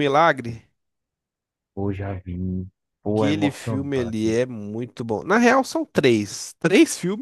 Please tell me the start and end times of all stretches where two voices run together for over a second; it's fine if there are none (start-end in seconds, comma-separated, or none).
3.1-4.4